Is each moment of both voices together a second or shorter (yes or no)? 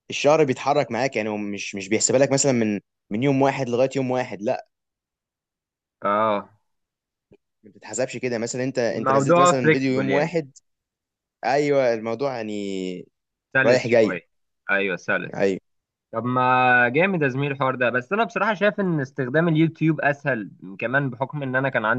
no